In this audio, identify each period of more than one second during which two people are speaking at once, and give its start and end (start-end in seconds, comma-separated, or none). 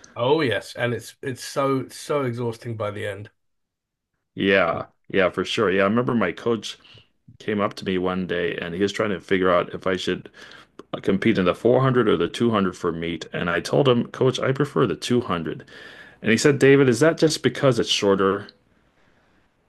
none